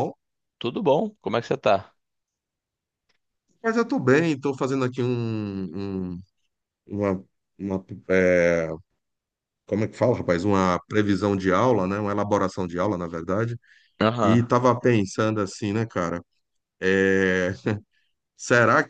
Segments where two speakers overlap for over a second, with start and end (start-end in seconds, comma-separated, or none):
none